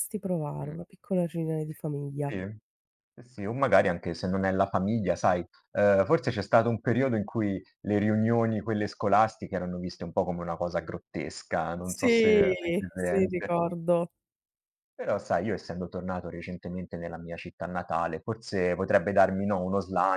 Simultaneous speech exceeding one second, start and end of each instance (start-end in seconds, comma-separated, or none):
11.8-13.5